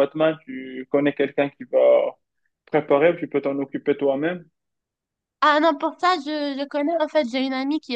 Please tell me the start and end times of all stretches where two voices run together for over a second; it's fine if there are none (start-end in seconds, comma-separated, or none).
none